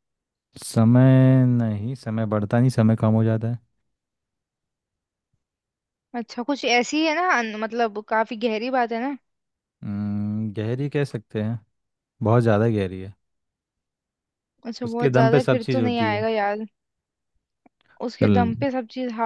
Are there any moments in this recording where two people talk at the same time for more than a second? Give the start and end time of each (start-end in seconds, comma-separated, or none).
14.8-16.2